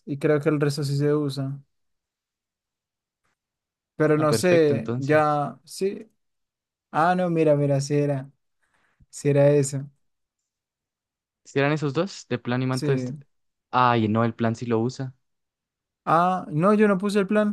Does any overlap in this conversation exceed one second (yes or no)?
yes